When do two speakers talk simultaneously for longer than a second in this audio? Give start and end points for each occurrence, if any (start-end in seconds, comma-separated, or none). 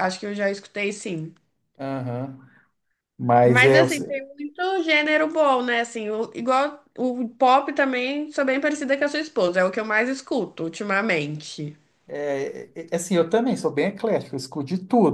none